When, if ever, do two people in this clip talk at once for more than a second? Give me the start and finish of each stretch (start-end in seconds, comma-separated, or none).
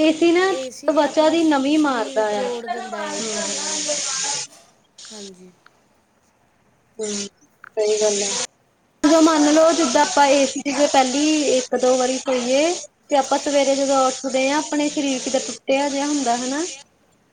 0.6-2.4